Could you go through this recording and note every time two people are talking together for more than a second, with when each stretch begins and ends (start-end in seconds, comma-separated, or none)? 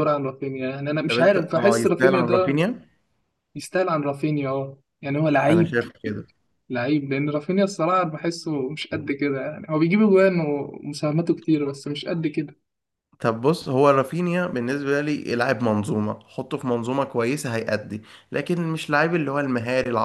1.1-2.6